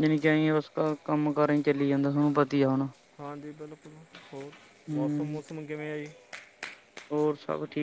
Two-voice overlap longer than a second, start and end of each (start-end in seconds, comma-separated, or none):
none